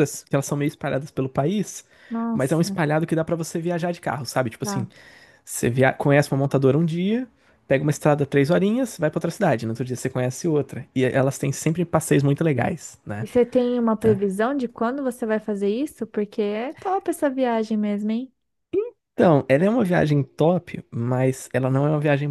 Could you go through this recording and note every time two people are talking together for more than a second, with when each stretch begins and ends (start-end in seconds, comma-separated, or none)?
none